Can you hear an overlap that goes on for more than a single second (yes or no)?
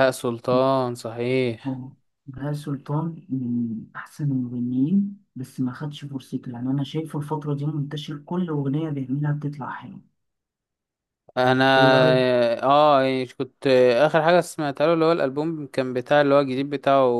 no